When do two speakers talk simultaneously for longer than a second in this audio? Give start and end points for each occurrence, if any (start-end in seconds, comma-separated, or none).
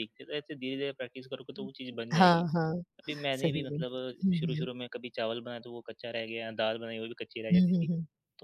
3.3-4.7